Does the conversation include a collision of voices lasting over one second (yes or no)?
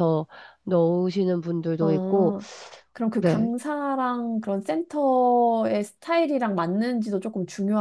no